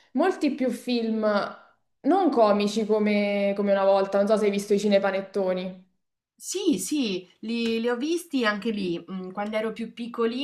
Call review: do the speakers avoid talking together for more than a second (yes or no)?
yes